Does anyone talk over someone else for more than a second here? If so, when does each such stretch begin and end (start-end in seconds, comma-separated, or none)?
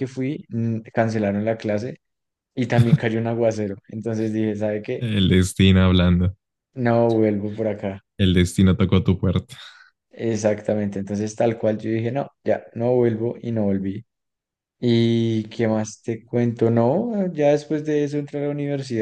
none